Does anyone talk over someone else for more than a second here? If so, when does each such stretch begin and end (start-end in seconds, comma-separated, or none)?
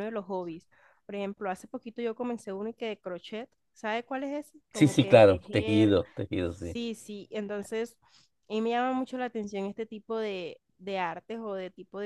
4.7-6.0